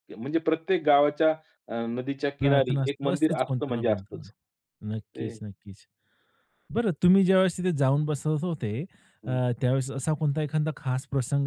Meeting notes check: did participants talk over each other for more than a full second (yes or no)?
yes